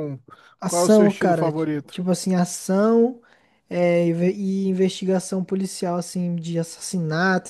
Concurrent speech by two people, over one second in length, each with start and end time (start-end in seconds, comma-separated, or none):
0.7-2.0